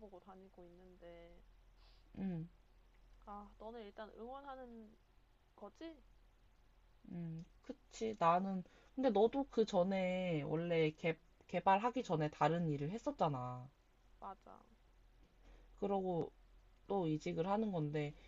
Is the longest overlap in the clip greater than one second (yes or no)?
no